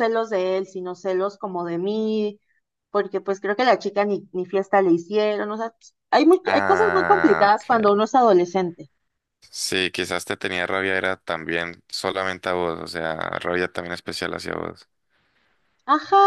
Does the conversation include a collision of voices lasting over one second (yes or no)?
yes